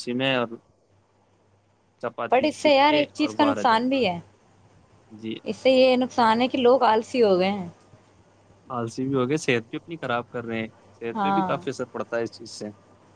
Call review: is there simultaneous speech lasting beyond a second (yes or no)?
yes